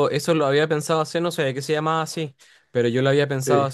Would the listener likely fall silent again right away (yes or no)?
yes